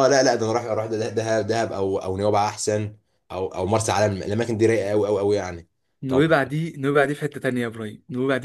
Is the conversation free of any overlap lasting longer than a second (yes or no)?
yes